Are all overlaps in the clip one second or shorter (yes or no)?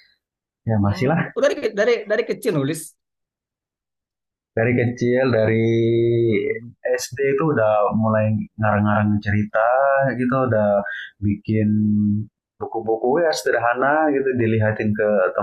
yes